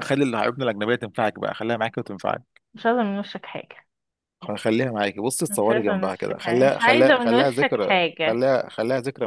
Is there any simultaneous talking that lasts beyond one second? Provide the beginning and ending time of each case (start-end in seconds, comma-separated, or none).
5.5-8.4